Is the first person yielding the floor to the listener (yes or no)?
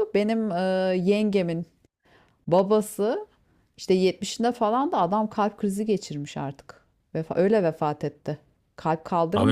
yes